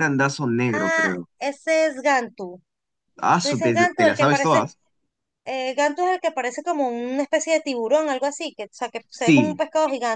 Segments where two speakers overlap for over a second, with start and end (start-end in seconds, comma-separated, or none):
3.4-4.6